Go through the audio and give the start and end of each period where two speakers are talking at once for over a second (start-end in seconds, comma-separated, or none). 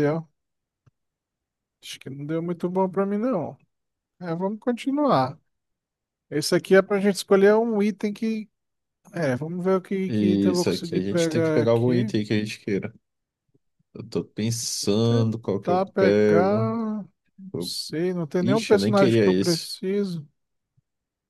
10.1-12.1, 15.0-16.6, 18.4-19.7